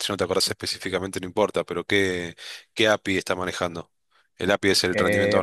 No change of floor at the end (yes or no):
no